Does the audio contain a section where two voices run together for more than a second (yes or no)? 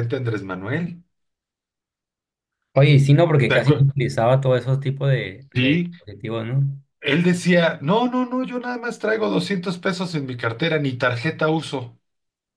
no